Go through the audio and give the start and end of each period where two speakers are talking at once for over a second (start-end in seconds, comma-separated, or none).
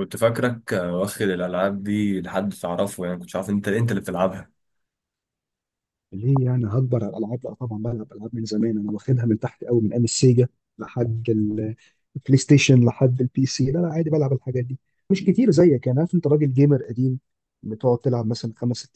none